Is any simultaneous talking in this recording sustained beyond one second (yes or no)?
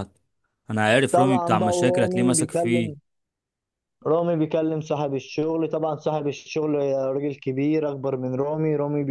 yes